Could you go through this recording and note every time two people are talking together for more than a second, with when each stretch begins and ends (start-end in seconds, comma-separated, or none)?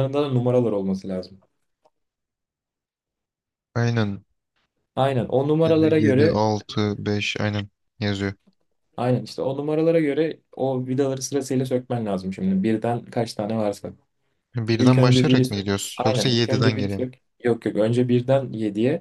14.8-17.1